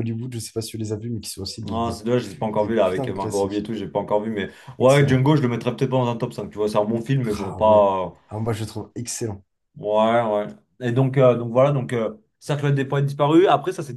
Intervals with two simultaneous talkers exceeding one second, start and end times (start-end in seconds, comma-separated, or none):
1.7-3.7